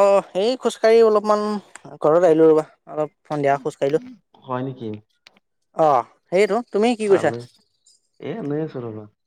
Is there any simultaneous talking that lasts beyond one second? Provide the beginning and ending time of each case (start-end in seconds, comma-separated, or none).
none